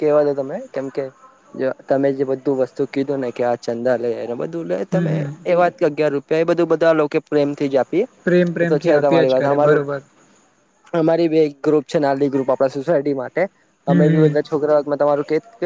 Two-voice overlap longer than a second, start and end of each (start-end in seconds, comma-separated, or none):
8.2-9.8